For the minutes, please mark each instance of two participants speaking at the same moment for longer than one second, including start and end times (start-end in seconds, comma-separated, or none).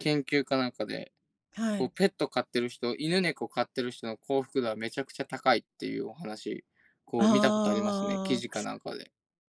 7.2-8.6